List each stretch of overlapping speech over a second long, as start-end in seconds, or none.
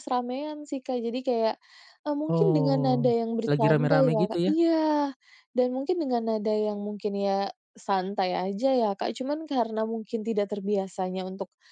2.4-4.5